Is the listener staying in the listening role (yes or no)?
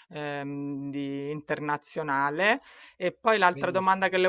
yes